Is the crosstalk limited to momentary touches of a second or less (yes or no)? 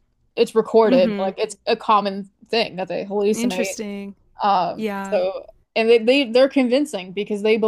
yes